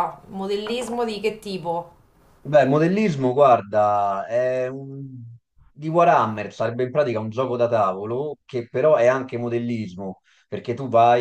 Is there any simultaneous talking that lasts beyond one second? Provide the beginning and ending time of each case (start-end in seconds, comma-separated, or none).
none